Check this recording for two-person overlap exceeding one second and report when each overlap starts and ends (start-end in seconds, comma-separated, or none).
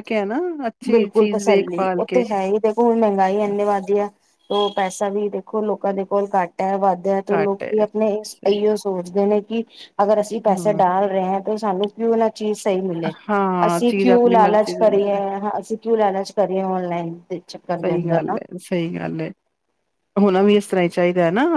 13.7-15.2